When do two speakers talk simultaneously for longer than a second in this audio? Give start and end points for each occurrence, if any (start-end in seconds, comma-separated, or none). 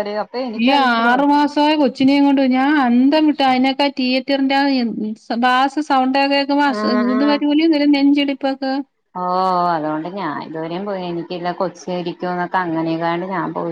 none